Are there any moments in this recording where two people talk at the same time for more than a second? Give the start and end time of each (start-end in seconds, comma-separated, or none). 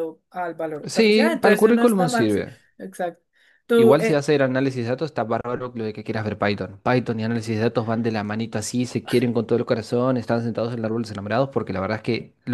0.8-2.6